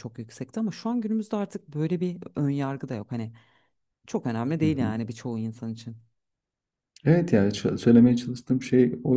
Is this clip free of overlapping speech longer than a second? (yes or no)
yes